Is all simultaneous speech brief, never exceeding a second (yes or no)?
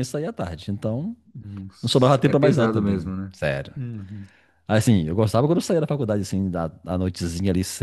no